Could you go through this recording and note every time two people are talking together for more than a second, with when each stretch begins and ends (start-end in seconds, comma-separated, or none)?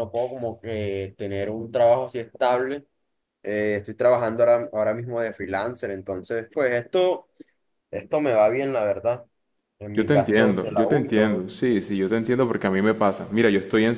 9.9-11.5